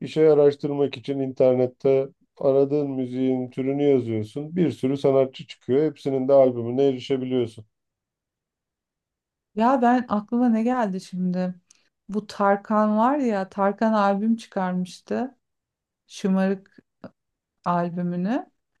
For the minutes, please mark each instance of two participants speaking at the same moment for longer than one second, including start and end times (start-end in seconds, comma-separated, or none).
none